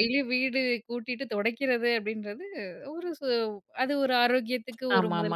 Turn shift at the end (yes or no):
yes